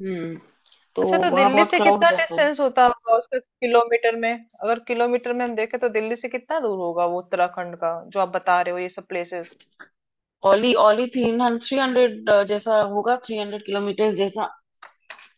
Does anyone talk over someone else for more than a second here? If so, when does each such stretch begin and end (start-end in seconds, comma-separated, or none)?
1.0-2.4